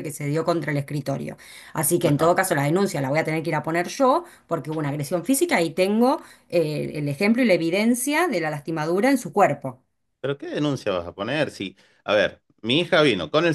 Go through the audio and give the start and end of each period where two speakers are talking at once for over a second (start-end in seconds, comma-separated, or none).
none